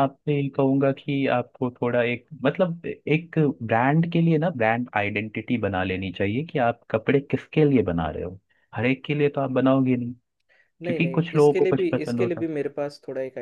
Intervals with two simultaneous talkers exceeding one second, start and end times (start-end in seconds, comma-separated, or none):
10.8-12.5